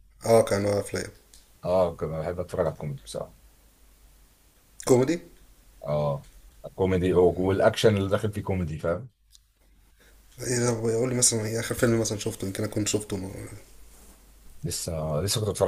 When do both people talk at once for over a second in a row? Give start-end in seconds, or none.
none